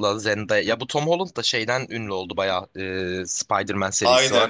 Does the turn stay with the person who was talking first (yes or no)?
no